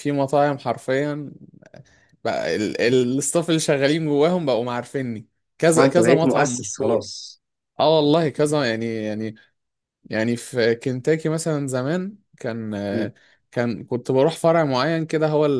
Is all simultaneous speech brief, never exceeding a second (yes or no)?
no